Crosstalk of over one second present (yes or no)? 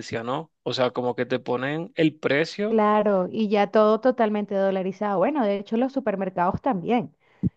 no